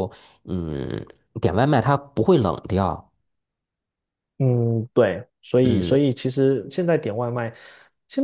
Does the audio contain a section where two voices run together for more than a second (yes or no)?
no